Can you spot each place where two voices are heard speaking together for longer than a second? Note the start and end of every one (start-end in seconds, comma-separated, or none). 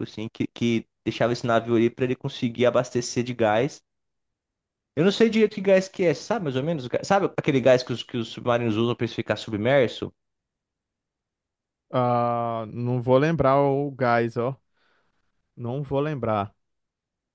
none